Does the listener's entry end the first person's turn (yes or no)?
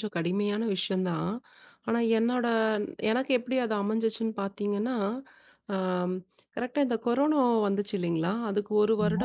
no